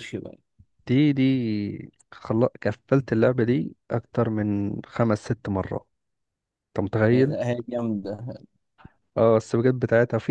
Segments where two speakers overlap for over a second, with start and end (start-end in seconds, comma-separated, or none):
none